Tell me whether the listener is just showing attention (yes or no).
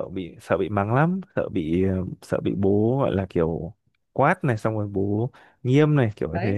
no